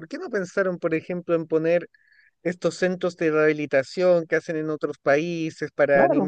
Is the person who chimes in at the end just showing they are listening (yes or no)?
yes